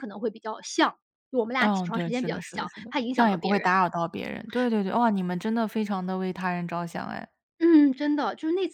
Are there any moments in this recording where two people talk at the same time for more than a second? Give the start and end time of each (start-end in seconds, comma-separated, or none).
1.6-3.8